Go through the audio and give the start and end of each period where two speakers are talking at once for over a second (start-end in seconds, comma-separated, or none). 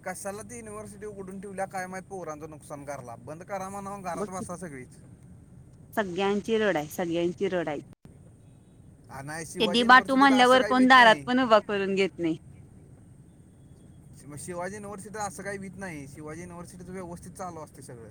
9.6-11.2